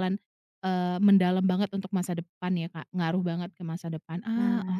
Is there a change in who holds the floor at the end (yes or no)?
yes